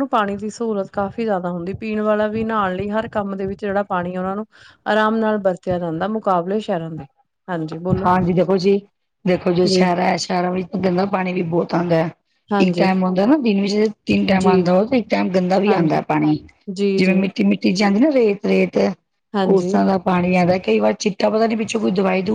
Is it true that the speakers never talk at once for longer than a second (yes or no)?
yes